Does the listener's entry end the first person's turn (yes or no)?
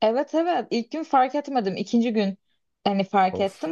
no